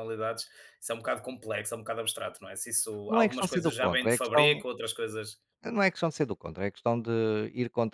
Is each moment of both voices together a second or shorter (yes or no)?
no